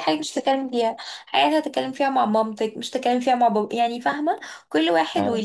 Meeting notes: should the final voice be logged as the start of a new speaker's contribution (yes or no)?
no